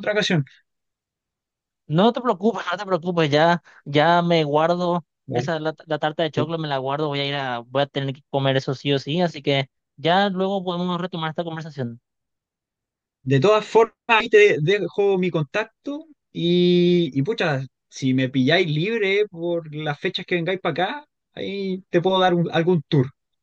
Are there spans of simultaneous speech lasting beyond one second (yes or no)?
no